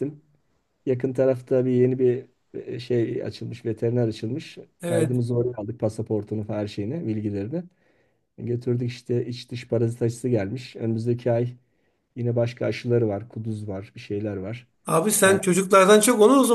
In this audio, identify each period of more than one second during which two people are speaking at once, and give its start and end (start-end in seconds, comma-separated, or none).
none